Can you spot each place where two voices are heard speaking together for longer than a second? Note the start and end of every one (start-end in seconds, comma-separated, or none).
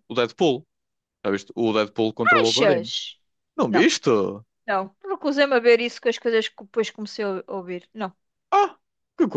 none